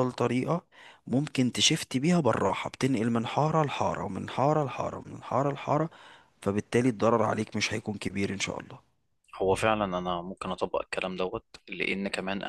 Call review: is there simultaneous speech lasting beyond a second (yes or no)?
no